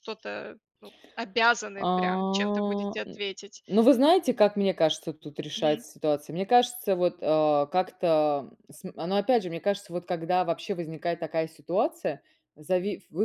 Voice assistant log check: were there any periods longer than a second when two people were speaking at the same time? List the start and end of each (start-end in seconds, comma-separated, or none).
1.8-3.2